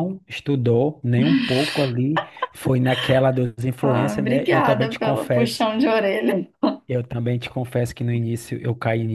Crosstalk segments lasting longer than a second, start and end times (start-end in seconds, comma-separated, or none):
3.8-5.7